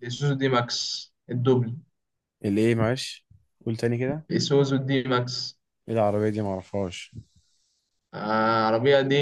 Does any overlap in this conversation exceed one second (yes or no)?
no